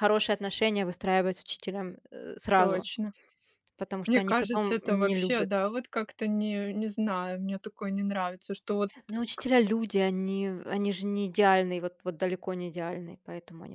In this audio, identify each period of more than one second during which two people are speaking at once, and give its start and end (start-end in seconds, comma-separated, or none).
4.1-5.5